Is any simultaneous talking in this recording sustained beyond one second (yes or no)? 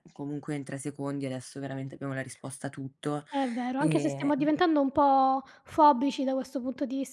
no